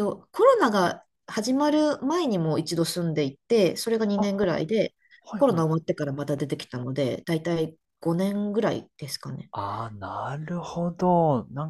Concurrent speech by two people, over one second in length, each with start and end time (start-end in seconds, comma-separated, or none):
none